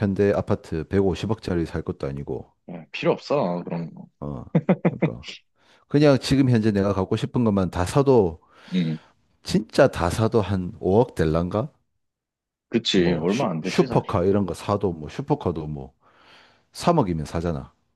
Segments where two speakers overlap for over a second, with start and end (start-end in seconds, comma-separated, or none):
12.9-14.1